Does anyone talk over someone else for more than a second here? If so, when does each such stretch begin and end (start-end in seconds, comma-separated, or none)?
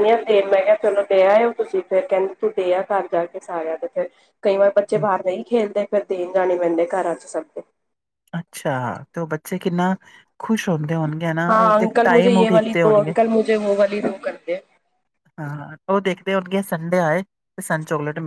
none